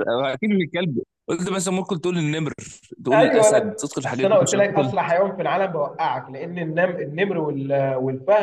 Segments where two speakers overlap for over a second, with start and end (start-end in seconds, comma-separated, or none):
3.1-4.9